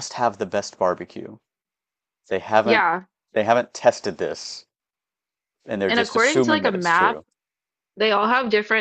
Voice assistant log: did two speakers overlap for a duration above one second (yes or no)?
yes